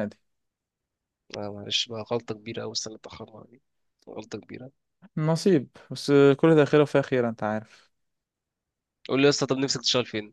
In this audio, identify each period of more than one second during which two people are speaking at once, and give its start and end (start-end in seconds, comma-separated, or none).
none